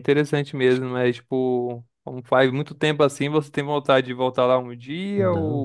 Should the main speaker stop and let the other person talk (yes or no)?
yes